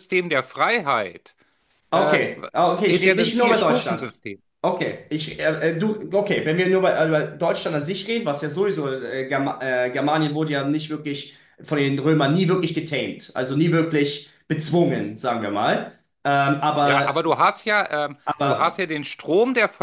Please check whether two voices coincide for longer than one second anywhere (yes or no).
yes